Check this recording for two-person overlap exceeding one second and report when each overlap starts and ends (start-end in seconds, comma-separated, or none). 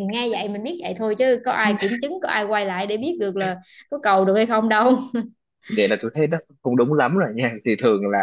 none